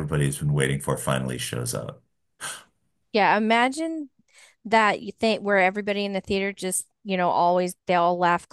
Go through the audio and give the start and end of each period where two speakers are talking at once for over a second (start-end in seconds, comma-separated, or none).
none